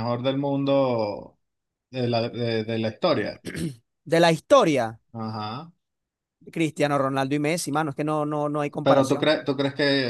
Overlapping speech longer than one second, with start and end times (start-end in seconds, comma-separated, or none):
none